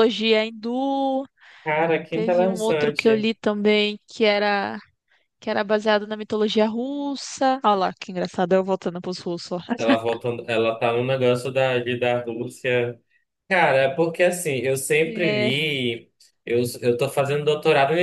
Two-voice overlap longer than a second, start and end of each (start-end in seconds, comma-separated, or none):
2.1-3.3